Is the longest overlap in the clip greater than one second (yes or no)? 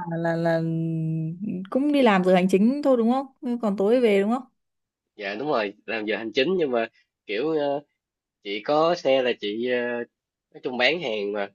no